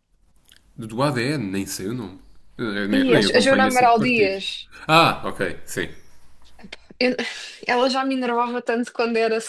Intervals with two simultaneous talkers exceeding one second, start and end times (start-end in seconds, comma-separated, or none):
3.0-4.4